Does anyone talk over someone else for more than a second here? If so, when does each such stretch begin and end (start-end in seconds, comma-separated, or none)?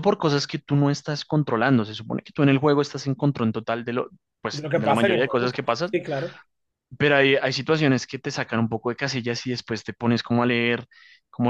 4.5-6.0